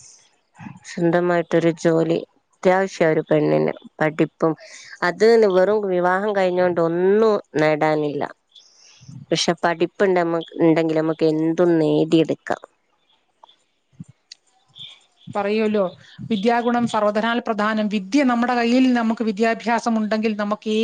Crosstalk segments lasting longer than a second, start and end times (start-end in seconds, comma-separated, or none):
none